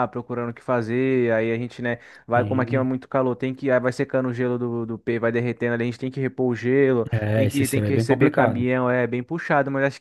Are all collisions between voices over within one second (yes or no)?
no